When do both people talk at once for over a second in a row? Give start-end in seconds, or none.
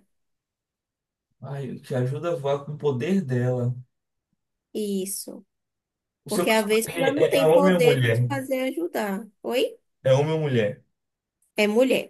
6.3-8.2